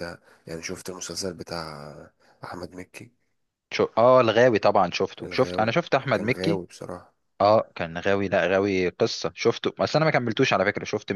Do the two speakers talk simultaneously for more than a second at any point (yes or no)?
yes